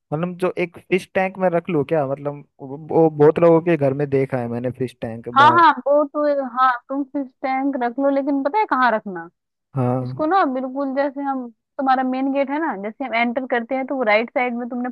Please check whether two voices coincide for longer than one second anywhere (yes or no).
no